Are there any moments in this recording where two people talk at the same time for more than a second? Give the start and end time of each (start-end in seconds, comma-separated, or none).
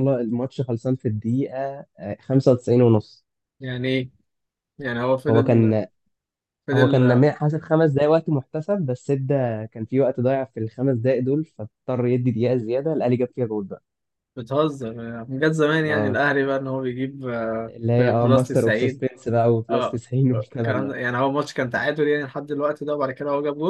17.7-19.0